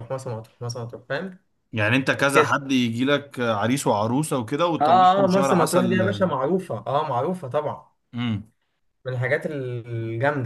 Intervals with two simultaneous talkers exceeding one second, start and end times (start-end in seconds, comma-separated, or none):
4.8-6.2